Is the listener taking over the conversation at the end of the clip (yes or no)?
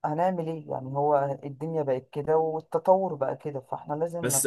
yes